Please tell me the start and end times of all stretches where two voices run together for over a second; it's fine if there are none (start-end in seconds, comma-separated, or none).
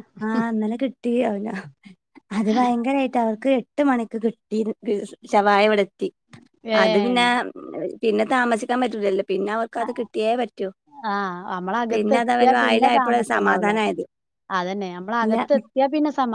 11.9-13.7